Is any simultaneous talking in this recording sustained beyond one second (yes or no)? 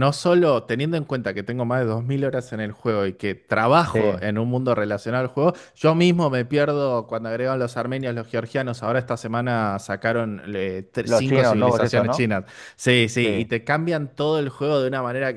yes